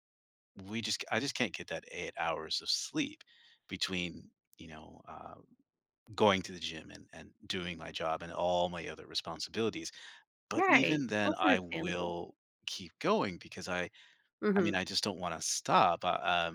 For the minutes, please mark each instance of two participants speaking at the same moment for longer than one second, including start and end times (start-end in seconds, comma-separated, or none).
10.6-12.1